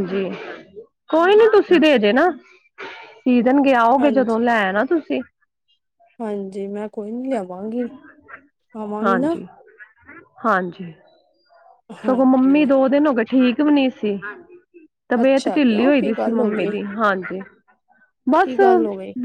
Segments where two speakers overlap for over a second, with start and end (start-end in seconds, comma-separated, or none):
15.2-16.7